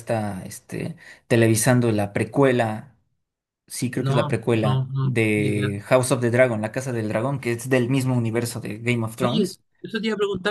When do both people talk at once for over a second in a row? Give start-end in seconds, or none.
4.0-5.7